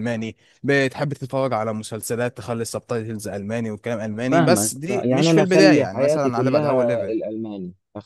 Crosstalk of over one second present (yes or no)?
yes